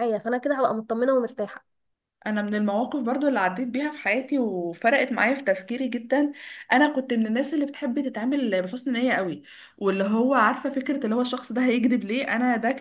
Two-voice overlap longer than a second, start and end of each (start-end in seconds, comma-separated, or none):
none